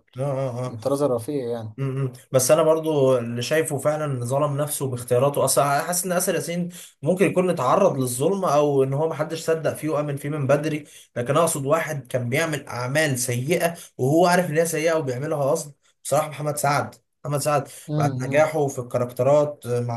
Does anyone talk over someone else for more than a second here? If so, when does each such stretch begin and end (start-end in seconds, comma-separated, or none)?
none